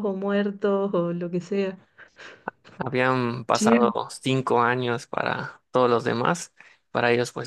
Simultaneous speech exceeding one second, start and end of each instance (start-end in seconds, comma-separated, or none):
none